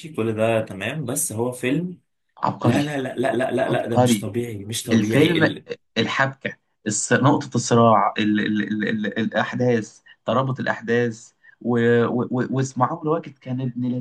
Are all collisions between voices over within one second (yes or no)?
yes